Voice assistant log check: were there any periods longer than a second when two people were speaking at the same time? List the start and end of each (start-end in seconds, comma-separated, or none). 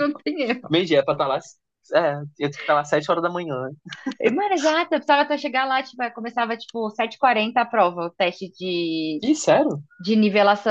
none